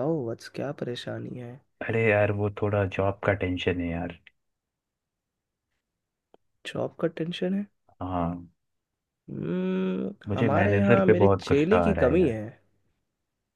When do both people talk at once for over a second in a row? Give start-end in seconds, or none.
10.3-12.3